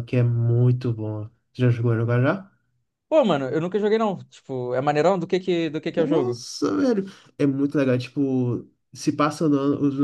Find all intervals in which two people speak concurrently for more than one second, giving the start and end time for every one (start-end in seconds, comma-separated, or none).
none